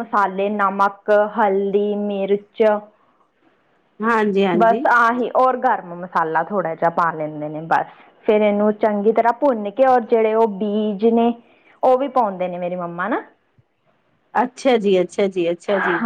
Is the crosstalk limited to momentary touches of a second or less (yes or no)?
yes